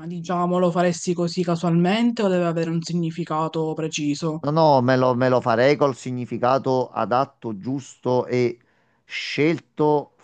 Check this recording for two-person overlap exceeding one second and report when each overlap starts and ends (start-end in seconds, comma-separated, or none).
none